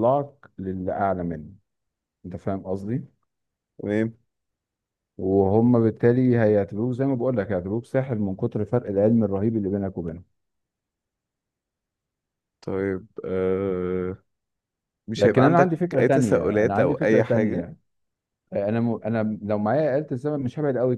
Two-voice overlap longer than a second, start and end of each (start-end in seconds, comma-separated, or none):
15.2-17.6